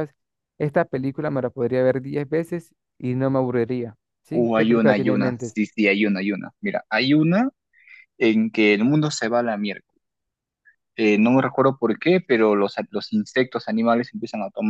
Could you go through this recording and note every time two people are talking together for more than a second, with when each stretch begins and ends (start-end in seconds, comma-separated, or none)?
4.3-5.5